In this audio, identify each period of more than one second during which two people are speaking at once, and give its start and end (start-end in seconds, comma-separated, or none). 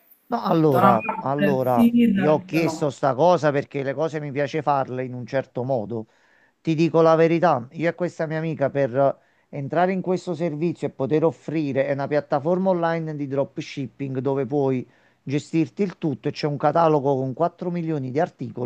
0.6-2.9